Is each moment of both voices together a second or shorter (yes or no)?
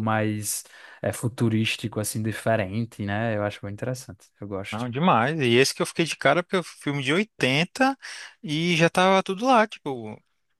yes